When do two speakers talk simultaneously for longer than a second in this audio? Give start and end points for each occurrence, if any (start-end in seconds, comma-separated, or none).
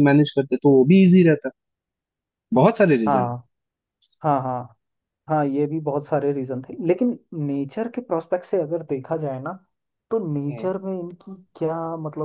none